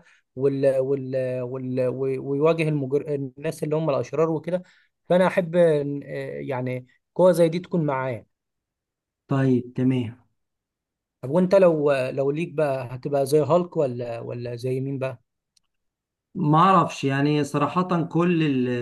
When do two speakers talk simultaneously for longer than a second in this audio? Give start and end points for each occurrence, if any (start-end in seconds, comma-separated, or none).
none